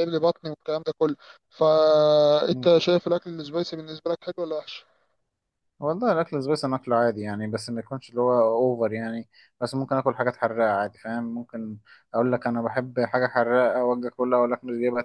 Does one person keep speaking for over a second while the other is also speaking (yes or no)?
no